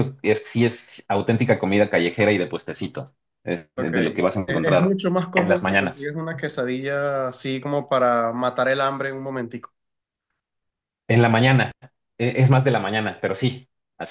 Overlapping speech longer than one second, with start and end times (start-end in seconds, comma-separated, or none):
3.8-6.2